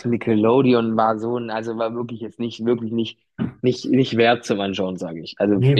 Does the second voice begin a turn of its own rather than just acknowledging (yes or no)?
yes